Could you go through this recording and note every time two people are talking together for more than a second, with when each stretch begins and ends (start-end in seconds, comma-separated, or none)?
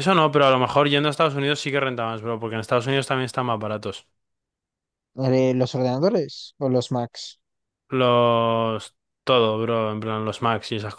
none